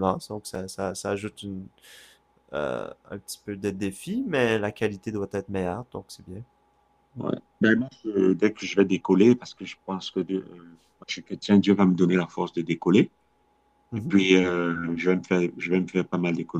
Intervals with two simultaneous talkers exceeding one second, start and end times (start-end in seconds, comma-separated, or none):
none